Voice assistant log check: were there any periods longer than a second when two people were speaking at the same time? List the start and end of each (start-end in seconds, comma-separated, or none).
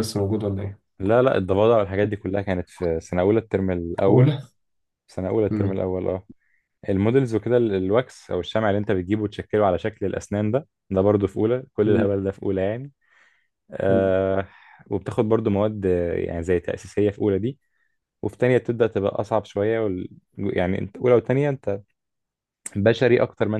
none